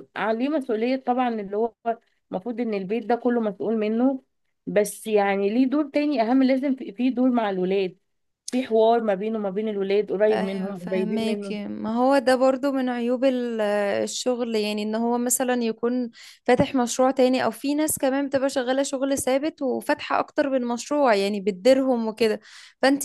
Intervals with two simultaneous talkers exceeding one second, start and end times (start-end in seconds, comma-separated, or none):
10.3-11.6